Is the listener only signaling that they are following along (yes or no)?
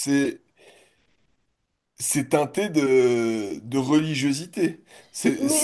no